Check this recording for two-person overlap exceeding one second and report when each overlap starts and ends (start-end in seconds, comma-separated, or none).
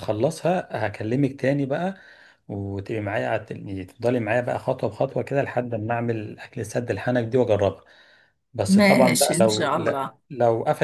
8.7-10.2